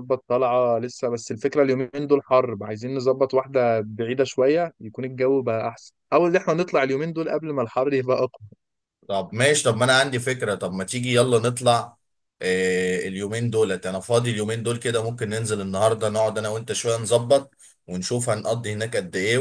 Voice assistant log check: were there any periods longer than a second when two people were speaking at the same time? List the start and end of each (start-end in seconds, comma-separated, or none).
none